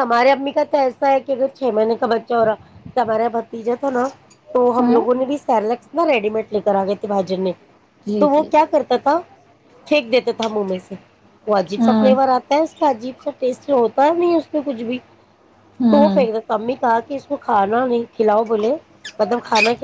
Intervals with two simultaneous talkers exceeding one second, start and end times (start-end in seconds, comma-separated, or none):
none